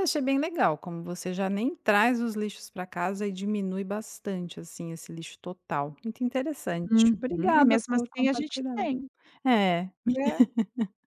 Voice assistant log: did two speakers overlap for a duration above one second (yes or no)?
yes